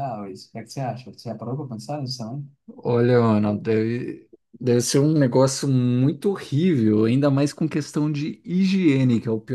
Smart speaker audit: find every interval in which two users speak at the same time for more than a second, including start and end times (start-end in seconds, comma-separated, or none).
none